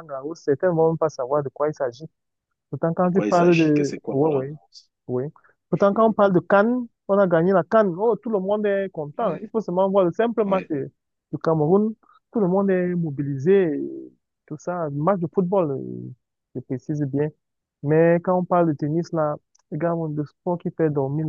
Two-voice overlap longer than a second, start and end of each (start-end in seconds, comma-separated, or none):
3.0-4.5